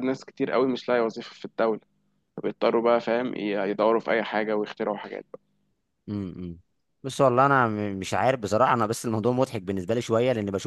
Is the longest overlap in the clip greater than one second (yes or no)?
no